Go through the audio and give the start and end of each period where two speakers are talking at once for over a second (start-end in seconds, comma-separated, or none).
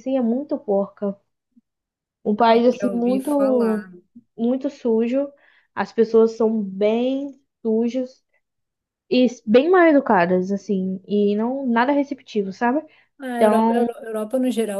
2.5-3.9